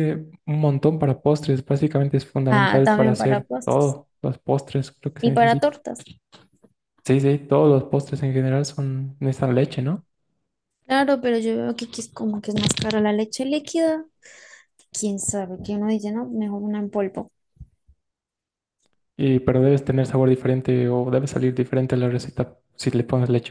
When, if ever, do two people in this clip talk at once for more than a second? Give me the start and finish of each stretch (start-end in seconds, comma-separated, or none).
2.5-4.0